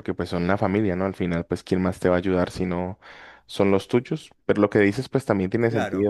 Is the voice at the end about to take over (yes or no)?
no